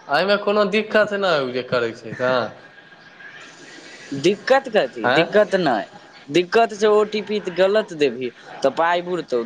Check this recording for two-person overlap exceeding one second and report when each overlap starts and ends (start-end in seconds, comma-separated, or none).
none